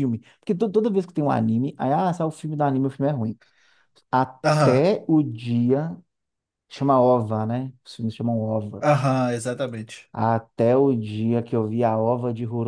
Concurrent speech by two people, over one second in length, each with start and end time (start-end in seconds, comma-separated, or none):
none